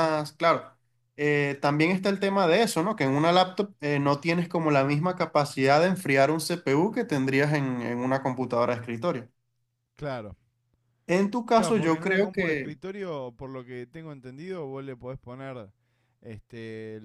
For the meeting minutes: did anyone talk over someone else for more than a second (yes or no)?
yes